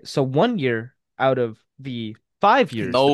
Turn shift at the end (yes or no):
yes